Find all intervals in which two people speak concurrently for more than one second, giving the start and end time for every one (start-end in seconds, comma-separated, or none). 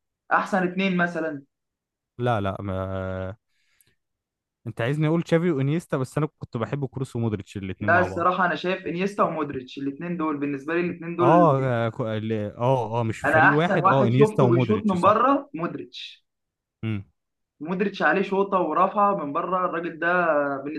13.2-15.2